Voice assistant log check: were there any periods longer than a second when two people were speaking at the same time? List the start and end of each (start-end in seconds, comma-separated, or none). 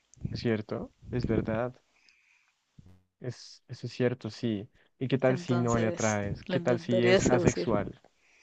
5.3-7.7